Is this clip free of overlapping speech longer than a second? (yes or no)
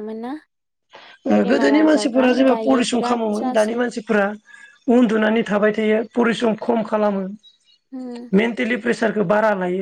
no